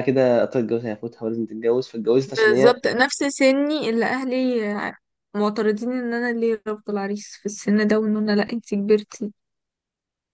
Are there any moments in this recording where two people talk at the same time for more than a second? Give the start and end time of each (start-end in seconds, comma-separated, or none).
none